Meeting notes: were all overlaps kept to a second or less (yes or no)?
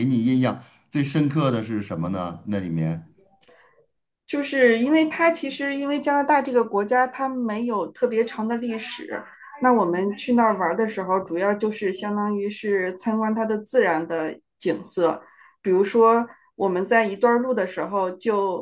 yes